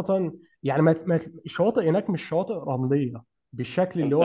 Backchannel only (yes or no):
yes